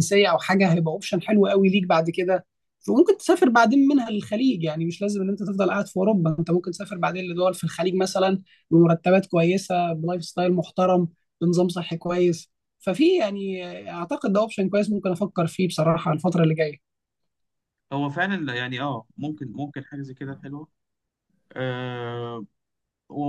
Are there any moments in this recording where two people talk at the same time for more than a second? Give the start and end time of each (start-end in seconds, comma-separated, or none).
none